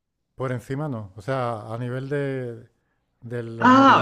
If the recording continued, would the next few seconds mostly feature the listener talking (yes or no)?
yes